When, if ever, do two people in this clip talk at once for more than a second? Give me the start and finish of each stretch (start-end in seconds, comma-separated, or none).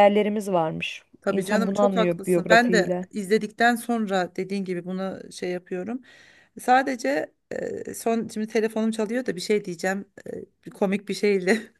1.2-3.1